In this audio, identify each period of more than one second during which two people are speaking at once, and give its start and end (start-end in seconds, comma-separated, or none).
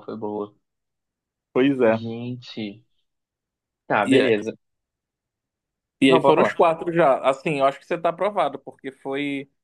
none